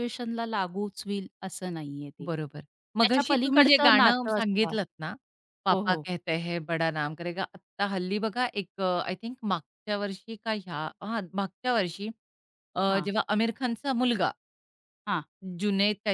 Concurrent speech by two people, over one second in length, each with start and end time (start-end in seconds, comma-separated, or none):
3.0-4.7